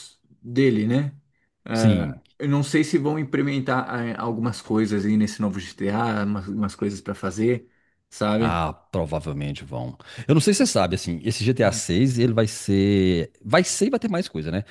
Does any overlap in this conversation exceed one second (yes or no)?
no